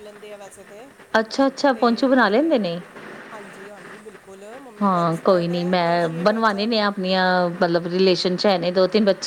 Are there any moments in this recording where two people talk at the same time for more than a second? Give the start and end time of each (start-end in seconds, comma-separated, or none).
4.8-6.5